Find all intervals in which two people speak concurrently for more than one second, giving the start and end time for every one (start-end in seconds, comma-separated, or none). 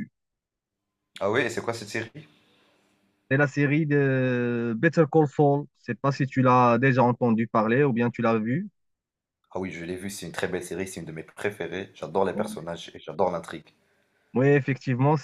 none